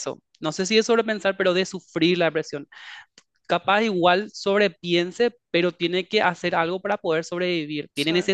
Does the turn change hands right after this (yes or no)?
no